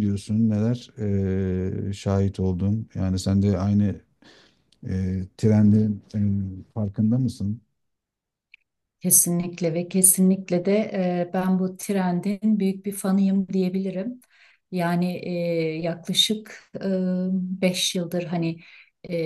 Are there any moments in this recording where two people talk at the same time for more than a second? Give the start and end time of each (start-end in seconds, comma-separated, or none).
none